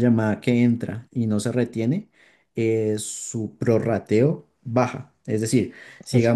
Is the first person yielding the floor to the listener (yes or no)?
yes